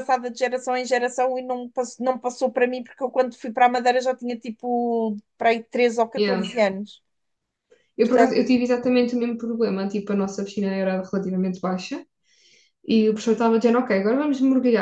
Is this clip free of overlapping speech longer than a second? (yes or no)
yes